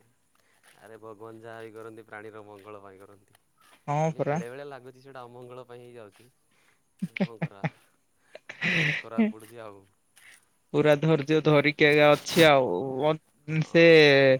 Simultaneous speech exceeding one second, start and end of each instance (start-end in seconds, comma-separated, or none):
none